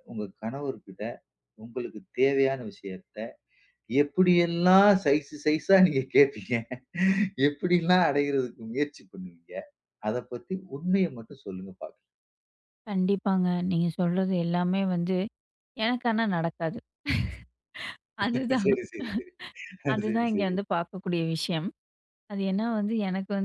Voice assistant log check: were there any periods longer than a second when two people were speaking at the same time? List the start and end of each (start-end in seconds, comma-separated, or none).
none